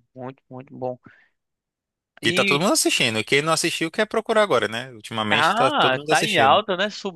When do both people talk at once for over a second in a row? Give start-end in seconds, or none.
5.3-6.6